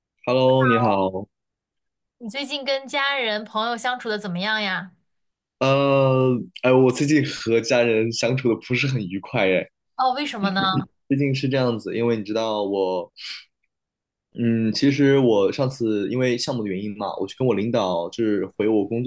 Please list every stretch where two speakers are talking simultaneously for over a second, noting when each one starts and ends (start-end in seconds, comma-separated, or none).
none